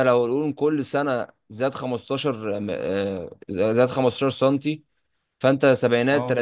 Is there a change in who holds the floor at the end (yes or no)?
no